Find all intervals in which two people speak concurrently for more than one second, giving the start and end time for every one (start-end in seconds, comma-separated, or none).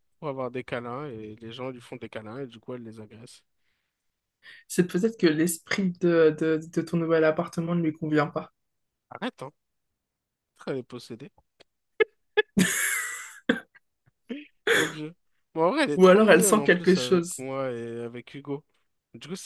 15.9-17.4